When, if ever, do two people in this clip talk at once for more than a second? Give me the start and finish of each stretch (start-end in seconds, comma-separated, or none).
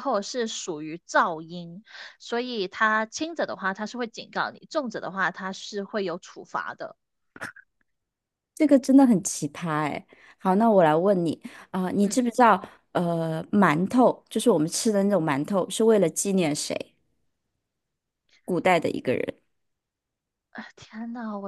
none